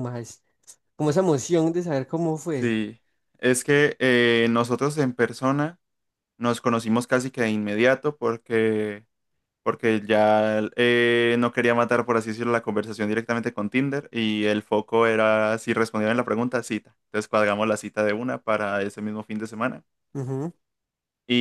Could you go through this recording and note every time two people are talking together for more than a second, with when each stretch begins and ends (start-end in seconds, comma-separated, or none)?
none